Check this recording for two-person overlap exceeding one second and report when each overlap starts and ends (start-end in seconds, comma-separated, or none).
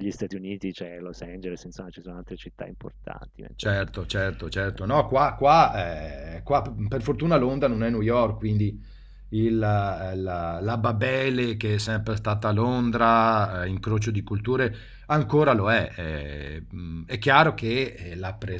none